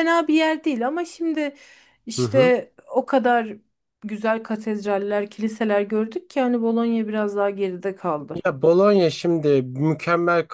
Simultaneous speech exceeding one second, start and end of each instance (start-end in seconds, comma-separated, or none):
none